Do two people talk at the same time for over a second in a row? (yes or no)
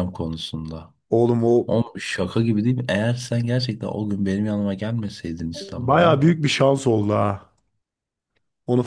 no